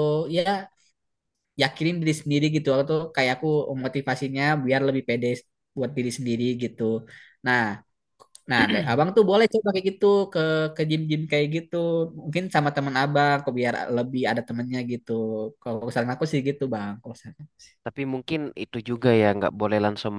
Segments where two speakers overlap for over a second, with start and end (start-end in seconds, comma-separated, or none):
none